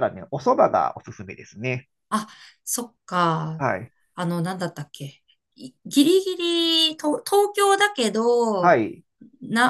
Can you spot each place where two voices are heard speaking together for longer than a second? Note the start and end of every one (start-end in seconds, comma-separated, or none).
none